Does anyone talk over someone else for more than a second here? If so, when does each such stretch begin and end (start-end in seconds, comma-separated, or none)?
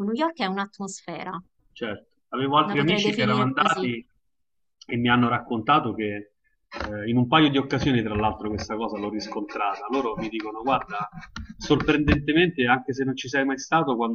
2.6-3.9